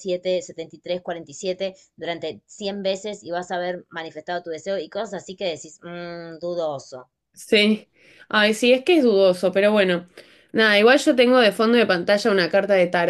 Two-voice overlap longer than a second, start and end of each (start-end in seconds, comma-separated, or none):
none